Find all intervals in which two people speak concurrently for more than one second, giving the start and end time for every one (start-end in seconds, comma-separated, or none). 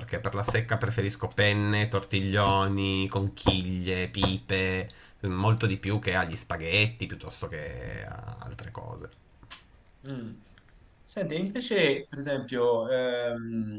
none